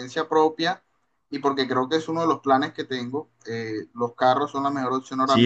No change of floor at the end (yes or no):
no